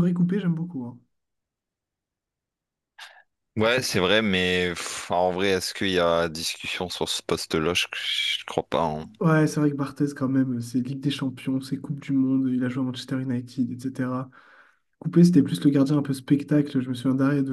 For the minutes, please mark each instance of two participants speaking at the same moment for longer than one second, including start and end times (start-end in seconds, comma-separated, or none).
none